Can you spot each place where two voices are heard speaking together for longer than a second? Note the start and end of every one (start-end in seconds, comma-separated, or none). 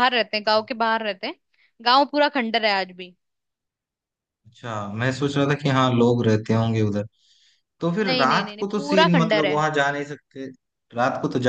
8.0-9.6